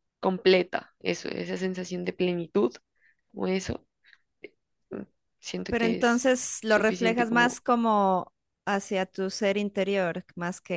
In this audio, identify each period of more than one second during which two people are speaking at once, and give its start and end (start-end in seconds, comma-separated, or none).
5.7-7.6